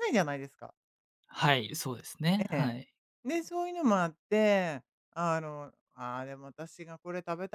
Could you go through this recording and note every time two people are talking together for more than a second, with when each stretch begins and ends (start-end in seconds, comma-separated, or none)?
none